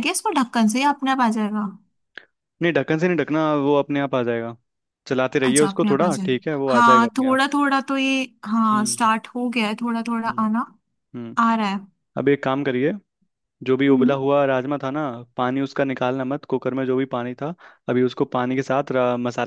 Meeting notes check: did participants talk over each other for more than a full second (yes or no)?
yes